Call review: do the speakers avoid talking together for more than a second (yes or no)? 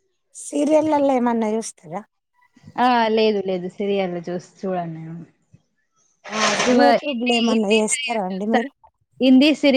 no